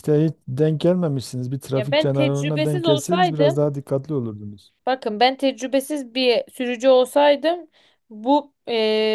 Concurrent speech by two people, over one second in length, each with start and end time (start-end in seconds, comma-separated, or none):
1.8-3.6